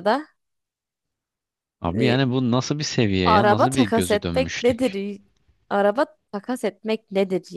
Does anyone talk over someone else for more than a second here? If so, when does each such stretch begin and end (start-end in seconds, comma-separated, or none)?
3.2-5.0